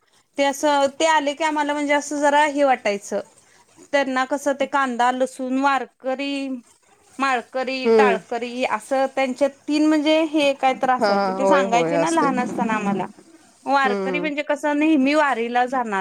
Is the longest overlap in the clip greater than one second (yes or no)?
yes